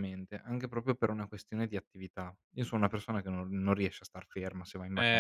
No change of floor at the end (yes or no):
no